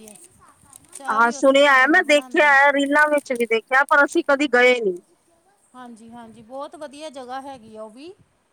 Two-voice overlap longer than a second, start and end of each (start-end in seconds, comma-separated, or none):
1.1-2.5